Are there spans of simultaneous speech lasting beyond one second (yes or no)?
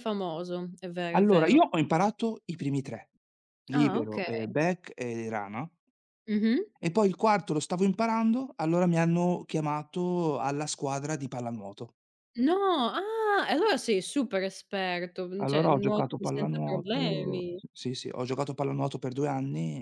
yes